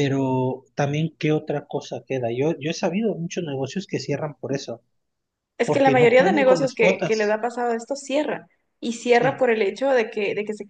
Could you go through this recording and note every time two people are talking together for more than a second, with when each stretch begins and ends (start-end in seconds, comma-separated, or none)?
5.6-7.4